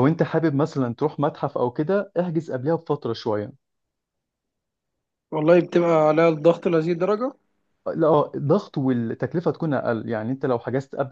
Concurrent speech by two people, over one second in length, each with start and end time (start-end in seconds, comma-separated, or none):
none